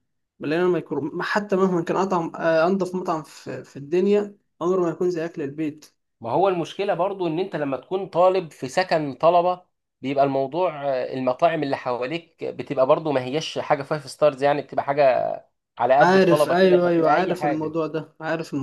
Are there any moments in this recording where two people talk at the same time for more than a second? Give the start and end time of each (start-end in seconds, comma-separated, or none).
16.0-17.8